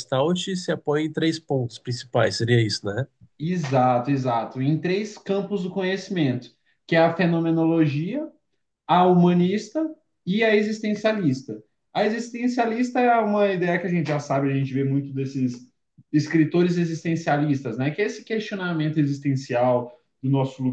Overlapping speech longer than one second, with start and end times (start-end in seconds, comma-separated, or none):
none